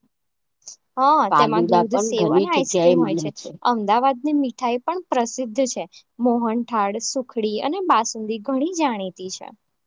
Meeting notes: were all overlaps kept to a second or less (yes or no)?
no